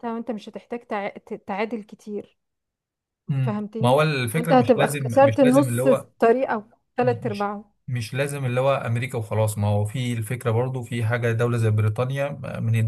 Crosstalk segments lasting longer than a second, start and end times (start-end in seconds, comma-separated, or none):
3.4-6.1